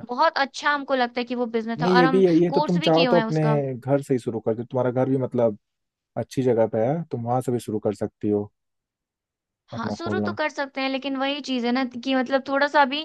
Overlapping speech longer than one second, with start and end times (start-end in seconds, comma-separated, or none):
1.8-3.6